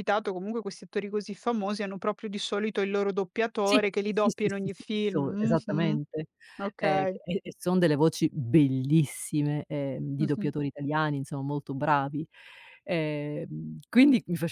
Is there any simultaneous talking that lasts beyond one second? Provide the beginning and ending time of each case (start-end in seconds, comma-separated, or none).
3.7-6.0